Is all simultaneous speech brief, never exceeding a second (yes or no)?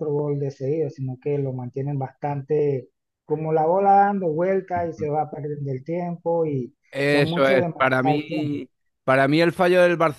no